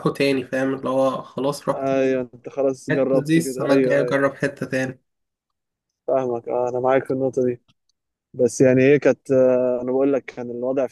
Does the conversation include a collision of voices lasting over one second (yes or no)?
yes